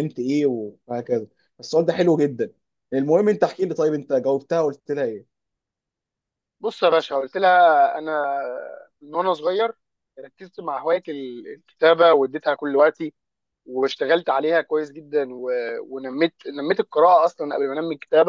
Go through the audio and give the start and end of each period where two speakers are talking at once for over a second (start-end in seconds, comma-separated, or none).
none